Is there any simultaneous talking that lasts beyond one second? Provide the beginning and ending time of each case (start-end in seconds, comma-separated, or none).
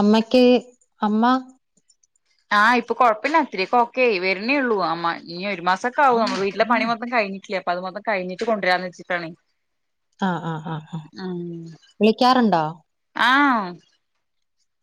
none